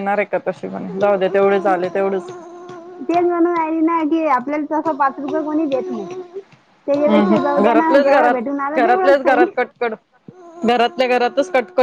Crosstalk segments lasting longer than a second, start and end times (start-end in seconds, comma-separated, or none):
7.0-9.4